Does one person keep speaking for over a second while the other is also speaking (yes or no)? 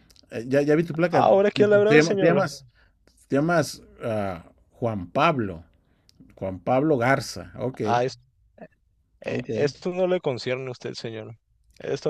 yes